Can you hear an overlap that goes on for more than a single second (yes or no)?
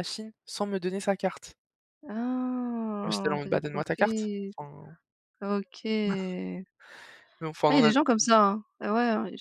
yes